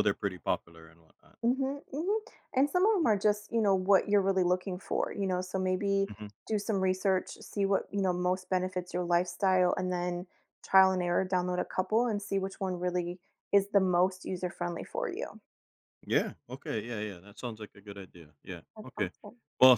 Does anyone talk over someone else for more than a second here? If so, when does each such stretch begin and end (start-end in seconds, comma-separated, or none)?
none